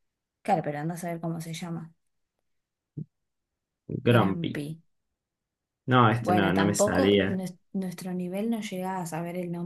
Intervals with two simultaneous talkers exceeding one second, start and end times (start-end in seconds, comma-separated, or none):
6.2-7.4